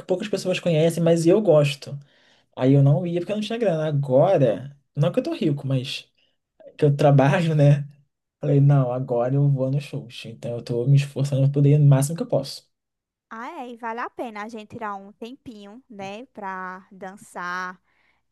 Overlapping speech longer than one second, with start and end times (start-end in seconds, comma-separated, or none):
none